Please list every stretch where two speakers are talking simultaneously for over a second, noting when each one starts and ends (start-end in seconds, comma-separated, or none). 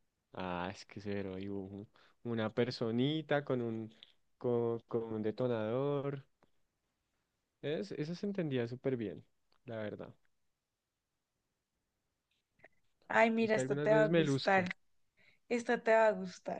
13.4-14.7